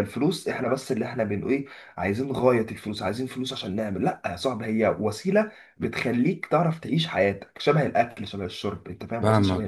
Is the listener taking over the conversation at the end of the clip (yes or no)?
yes